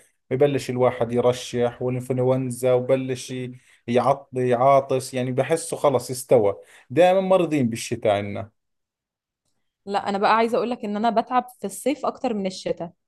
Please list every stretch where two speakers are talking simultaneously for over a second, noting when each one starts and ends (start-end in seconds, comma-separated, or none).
none